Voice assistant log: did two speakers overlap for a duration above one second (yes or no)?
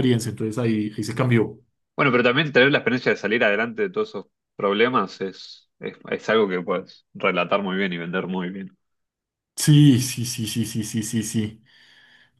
no